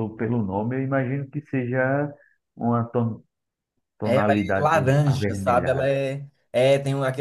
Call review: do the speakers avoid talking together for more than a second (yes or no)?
no